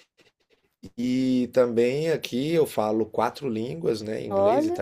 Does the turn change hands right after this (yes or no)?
no